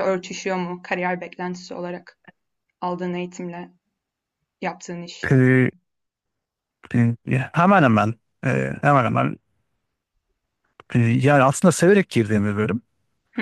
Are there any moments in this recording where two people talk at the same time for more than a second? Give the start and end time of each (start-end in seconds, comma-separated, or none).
none